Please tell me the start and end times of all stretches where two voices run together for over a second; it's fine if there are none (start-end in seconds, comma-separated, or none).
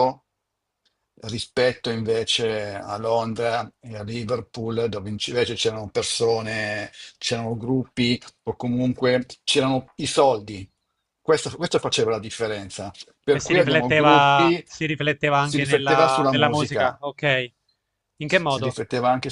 13.3-14.6, 15.4-17.0